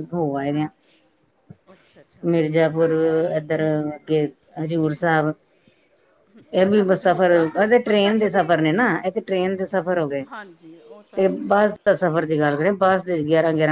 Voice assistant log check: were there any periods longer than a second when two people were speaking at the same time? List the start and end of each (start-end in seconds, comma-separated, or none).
6.7-8.5